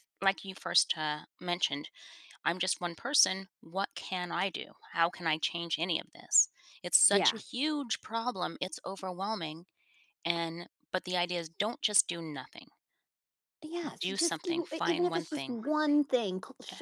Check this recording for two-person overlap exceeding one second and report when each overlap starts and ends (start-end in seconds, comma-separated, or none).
14.0-15.6